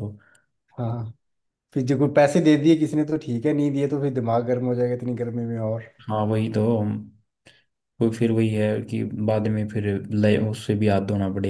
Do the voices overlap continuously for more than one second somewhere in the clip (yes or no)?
no